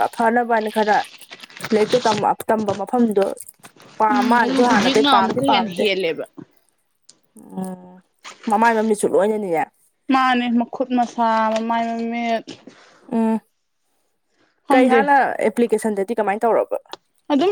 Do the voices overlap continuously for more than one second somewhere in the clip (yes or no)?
yes